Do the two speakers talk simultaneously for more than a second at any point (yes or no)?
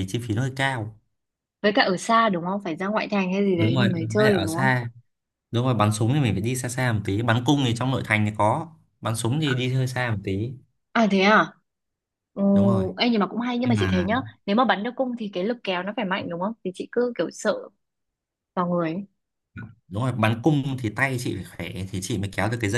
yes